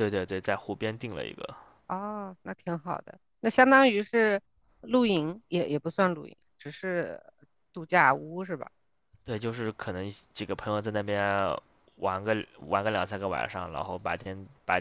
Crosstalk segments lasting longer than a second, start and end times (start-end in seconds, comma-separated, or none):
none